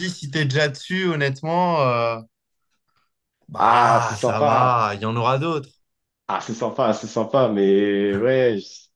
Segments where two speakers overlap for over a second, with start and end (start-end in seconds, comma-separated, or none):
3.6-4.8